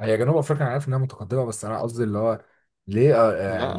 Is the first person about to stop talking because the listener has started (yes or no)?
yes